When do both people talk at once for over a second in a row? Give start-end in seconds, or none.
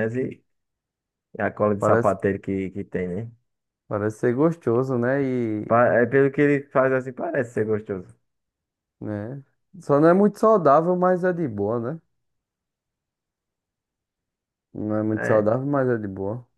none